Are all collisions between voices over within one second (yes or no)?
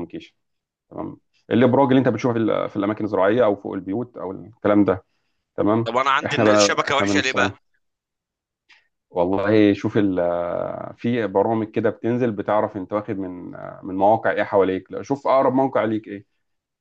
no